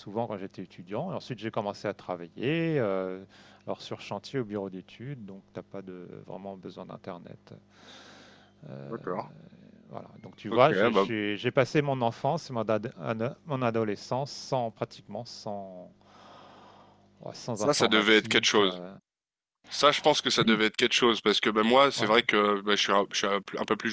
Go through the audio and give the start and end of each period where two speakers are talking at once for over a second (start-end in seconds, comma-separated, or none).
17.5-18.8